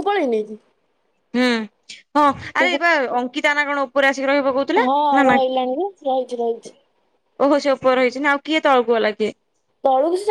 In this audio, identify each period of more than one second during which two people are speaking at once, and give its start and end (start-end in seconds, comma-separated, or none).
4.8-6.7